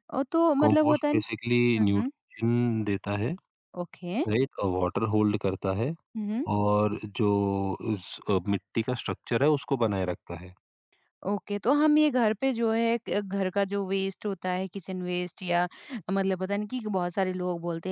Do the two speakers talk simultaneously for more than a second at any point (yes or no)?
yes